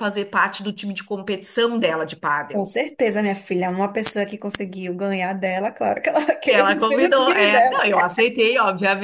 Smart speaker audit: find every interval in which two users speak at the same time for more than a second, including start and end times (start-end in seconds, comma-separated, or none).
6.5-7.8